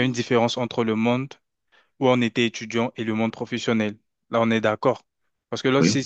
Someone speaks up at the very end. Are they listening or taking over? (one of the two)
listening